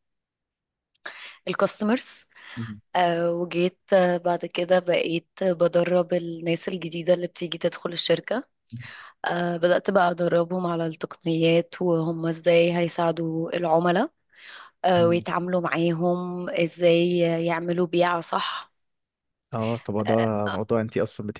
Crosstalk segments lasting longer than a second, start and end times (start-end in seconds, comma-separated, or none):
none